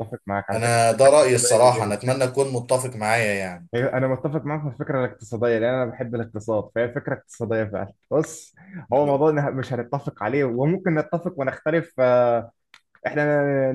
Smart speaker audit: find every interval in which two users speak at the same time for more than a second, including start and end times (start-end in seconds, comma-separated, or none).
0.5-2.3